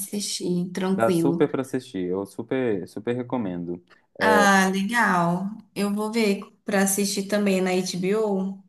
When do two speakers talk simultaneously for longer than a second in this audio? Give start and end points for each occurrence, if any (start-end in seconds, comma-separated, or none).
none